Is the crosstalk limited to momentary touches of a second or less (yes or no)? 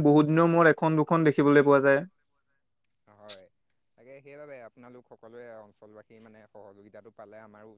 yes